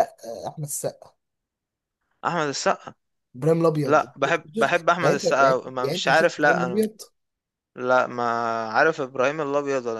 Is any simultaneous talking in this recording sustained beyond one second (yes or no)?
yes